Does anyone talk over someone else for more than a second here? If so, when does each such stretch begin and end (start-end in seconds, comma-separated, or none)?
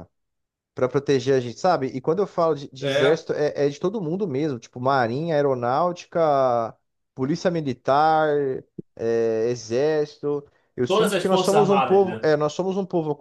10.9-12.3